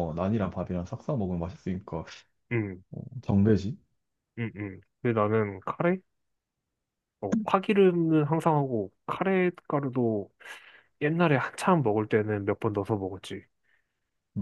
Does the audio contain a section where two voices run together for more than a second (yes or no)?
no